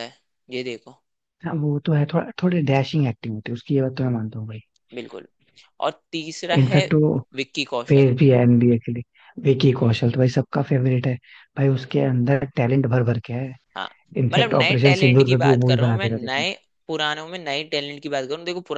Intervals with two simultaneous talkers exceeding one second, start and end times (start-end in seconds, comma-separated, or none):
14.3-16.4